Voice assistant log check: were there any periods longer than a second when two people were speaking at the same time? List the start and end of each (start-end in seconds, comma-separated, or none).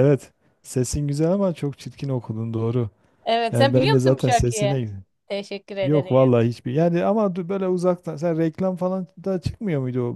3.5-4.7